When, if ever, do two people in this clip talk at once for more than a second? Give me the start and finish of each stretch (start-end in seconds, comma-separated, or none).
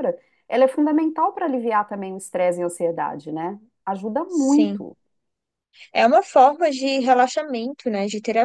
none